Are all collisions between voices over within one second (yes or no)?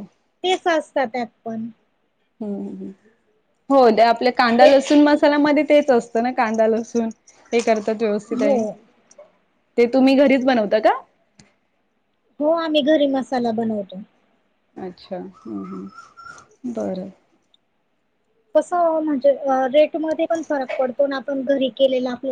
yes